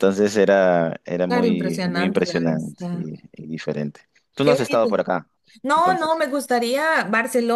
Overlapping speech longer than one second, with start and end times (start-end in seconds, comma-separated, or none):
1.3-3.1